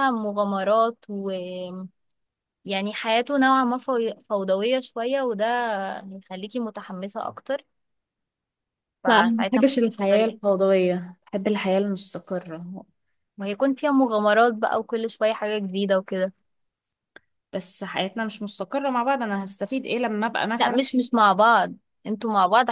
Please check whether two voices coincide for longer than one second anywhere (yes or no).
yes